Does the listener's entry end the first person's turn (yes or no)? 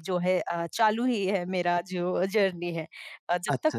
yes